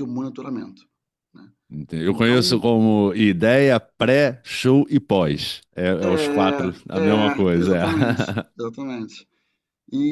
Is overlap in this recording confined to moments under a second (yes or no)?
no